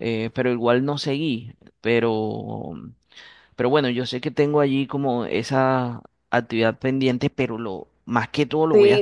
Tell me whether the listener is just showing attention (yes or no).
no